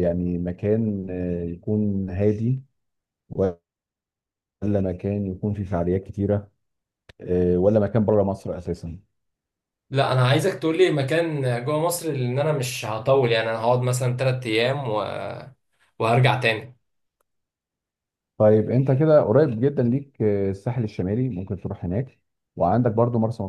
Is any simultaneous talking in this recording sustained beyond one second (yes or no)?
no